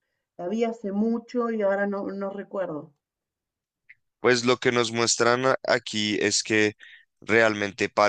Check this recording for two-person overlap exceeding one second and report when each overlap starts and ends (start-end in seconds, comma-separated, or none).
none